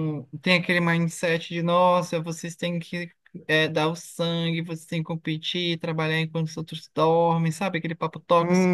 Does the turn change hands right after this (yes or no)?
yes